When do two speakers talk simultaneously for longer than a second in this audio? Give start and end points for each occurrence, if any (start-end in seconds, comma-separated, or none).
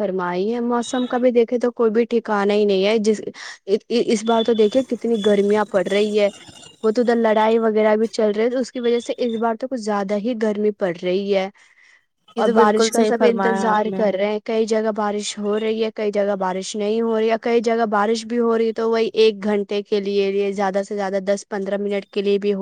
12.4-14.0